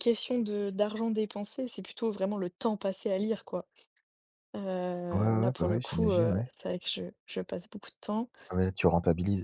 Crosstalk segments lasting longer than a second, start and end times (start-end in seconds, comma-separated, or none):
5.1-6.5